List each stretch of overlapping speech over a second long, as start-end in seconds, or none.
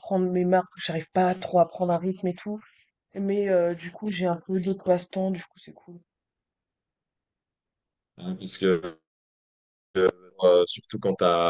none